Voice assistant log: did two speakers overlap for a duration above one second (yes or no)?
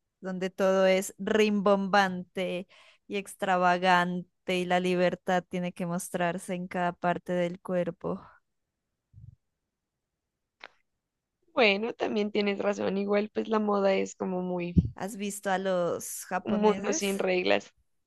no